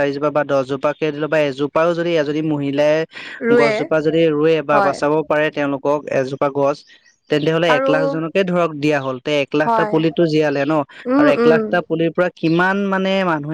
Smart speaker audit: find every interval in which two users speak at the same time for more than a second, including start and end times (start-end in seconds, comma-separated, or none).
none